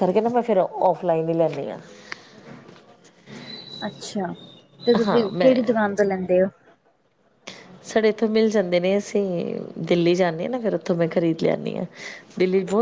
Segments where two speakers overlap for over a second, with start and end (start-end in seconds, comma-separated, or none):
none